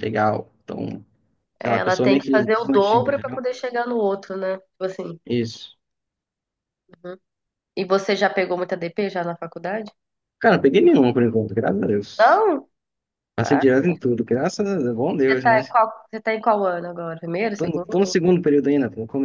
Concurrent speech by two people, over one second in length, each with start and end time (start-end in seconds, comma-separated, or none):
1.6-3.4